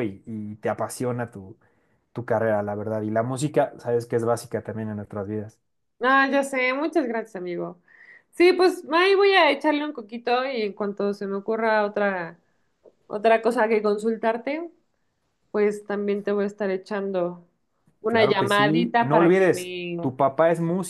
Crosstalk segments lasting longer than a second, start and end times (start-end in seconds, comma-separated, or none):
18.1-20.0